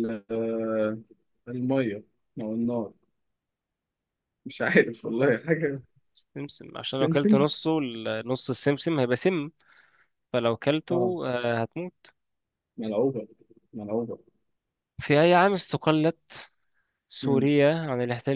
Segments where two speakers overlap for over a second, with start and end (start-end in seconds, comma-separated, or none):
none